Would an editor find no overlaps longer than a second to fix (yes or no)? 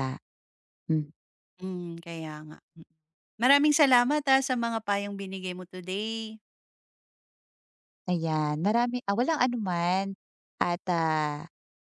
yes